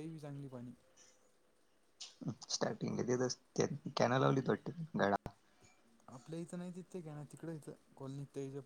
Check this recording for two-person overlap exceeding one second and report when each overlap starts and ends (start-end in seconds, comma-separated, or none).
none